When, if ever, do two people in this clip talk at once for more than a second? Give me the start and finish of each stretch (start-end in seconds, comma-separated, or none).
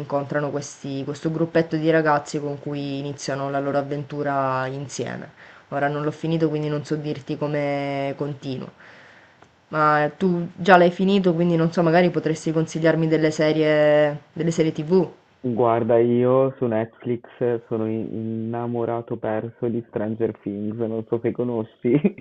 none